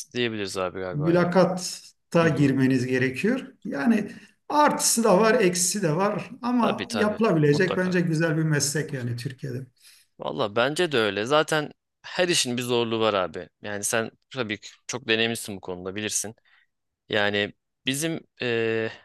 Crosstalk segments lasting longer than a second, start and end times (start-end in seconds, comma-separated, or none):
6.6-8.0